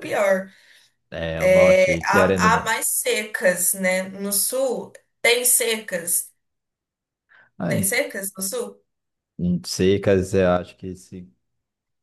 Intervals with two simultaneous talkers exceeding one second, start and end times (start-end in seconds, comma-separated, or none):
1.4-2.8